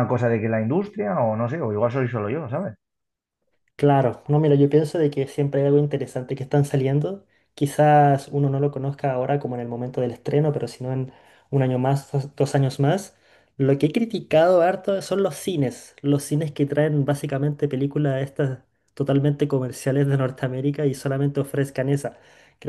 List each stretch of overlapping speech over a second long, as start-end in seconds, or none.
none